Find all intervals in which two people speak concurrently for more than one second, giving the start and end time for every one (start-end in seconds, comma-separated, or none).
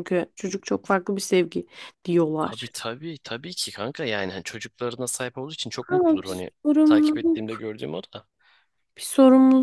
5.9-7.6